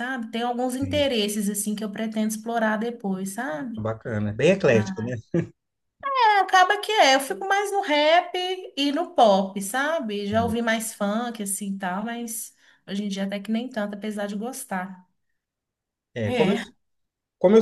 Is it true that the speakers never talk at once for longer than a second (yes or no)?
yes